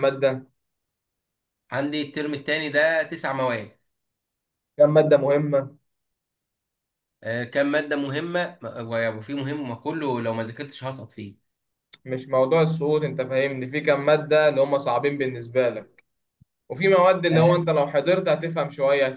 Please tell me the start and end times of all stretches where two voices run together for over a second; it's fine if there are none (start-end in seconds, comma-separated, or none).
none